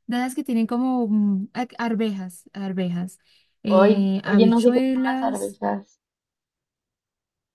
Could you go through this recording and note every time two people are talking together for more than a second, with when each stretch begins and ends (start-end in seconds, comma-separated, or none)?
3.6-5.6